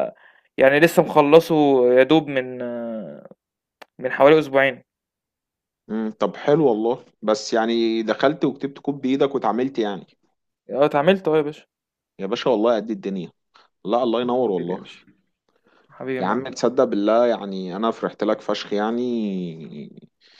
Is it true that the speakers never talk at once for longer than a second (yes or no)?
yes